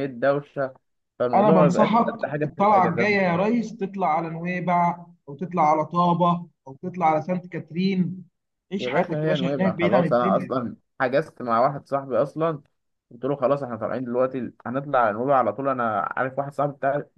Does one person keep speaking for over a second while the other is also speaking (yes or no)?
yes